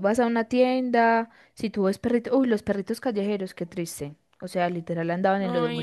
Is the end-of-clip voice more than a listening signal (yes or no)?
no